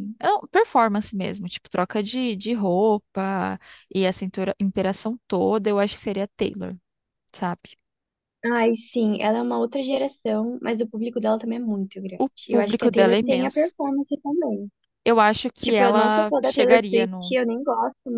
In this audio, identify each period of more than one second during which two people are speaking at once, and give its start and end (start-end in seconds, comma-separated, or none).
12.2-13.7, 15.6-17.4